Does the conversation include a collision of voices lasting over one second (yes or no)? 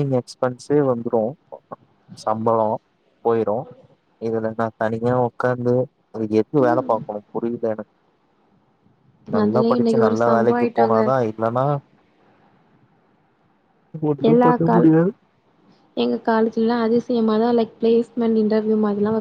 yes